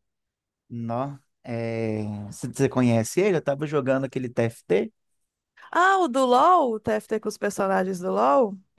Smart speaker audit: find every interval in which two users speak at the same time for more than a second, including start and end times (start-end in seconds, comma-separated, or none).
none